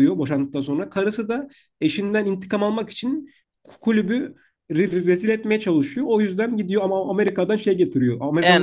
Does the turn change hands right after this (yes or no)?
no